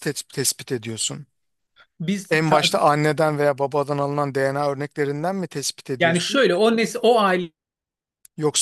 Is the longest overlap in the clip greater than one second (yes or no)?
no